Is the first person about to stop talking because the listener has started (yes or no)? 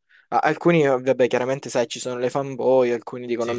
no